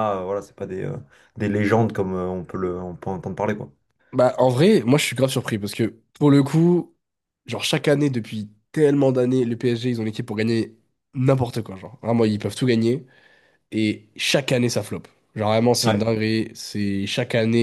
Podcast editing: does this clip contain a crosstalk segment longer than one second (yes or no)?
no